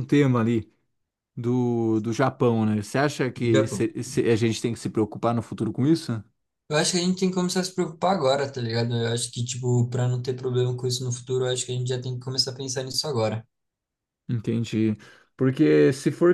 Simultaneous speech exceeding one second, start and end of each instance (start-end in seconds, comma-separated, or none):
none